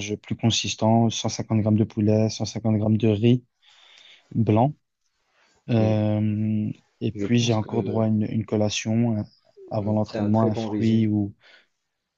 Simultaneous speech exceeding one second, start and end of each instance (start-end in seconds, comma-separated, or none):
9.8-11.1